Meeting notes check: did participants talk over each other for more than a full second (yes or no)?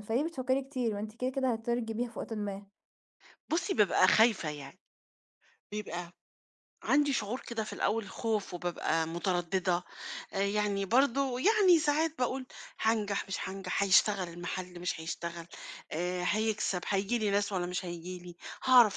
no